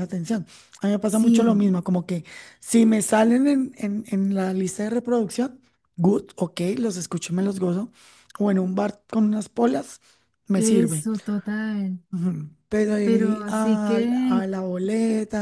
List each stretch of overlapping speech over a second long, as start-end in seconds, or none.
13.0-14.4